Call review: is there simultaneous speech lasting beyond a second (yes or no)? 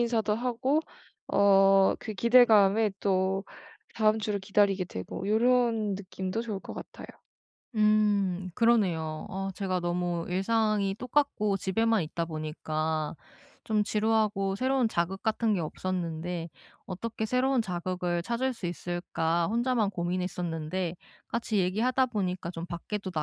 no